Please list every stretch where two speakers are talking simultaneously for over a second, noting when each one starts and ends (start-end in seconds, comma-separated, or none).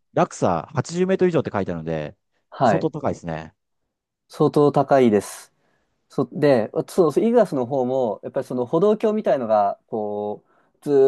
none